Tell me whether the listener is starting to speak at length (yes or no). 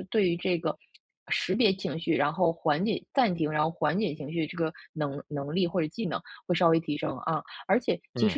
no